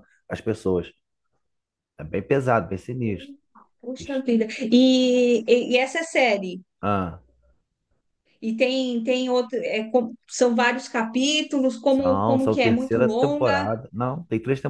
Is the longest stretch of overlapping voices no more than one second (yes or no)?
no